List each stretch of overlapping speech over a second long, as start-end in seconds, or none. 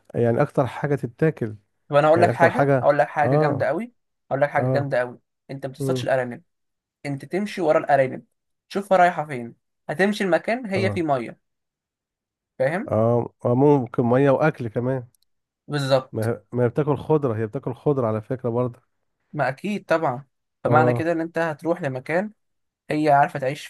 2.1-3.7